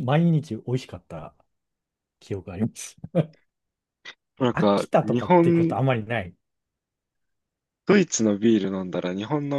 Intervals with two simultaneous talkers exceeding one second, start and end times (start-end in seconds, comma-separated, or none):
4.5-5.8